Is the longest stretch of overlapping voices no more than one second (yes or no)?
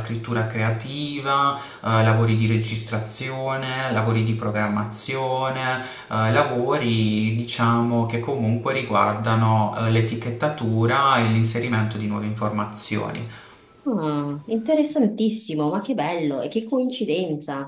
yes